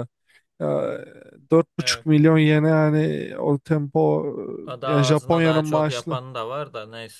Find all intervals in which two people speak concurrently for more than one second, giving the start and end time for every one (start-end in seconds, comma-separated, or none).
4.8-6.2